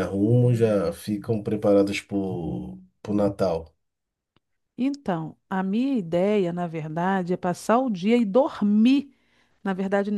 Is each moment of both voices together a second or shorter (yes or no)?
yes